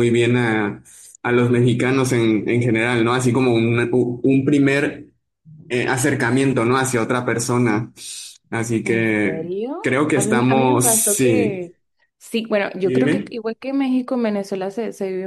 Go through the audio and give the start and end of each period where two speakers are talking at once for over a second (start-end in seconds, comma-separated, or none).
8.8-11.7